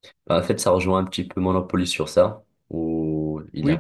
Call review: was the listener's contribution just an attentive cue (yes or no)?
yes